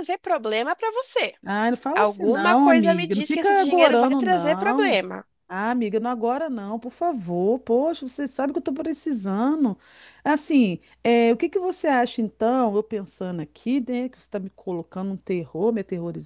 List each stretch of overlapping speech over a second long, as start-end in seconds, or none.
1.9-5.0